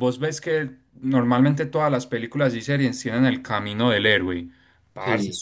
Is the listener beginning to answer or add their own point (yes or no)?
no